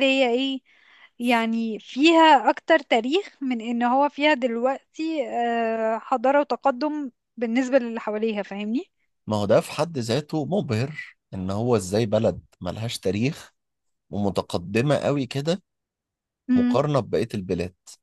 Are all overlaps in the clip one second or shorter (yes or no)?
yes